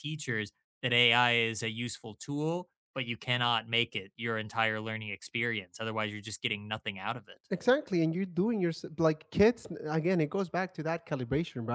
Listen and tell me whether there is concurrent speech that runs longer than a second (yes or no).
no